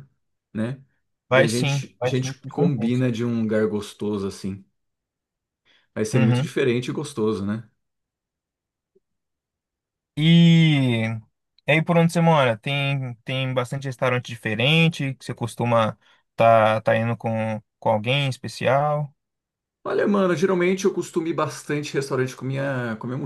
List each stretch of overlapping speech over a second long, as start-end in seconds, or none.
1.3-3.0